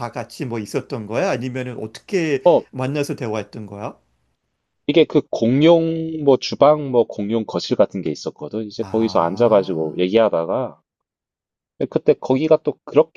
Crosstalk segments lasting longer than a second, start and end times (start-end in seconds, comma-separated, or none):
8.8-10.1